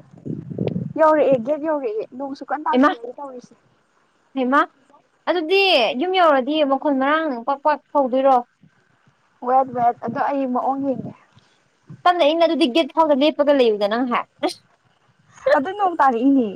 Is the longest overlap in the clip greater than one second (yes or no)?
no